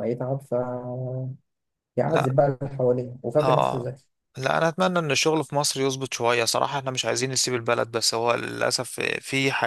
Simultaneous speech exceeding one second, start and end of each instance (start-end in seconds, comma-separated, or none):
none